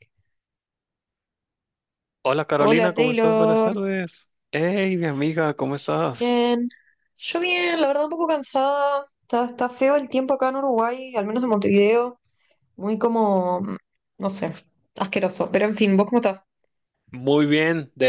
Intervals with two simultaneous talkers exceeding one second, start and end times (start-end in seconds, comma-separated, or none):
2.6-3.8